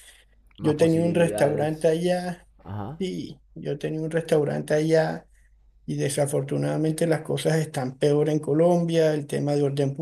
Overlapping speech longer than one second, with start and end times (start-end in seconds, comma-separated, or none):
0.6-1.9